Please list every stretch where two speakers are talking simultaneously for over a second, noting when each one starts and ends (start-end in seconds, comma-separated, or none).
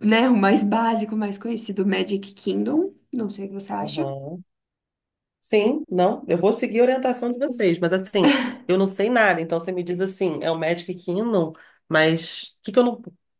none